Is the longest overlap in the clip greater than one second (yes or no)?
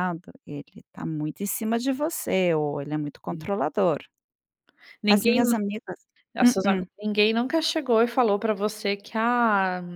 no